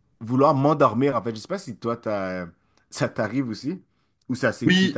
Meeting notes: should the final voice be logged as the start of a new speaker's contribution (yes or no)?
yes